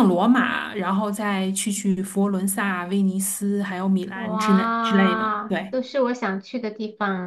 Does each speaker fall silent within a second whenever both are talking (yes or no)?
no